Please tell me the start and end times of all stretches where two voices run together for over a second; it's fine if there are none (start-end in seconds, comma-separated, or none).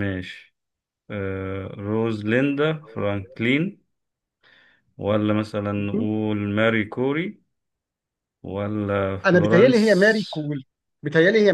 9.3-10.5